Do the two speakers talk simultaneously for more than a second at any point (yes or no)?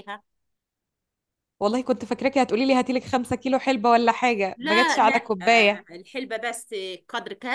yes